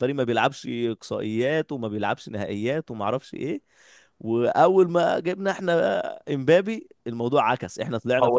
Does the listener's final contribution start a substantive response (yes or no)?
yes